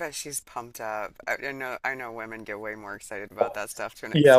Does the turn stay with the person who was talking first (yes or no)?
no